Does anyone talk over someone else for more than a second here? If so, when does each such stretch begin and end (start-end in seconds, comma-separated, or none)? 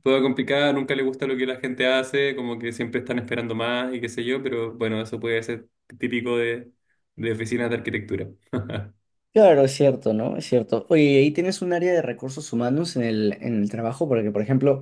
none